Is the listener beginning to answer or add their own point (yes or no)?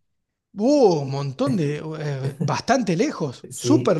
yes